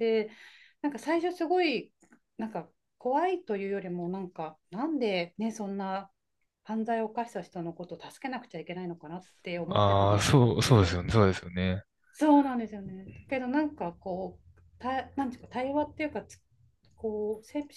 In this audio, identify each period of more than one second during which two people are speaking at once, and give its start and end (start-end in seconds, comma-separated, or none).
9.7-11.0